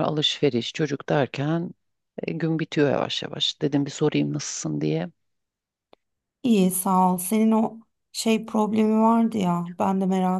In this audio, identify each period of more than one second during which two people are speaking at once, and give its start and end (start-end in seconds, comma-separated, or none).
none